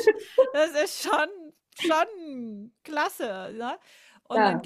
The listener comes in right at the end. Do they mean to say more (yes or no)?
no